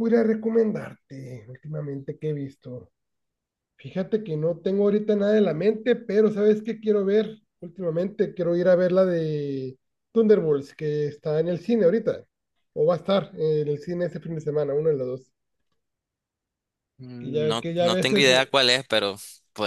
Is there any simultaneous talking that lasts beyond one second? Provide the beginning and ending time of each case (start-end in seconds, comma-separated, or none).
17.2-18.5